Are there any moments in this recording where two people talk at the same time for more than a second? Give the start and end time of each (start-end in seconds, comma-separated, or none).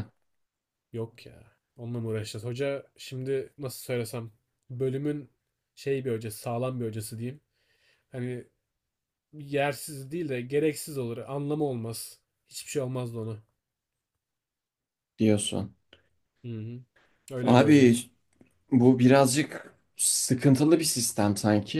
none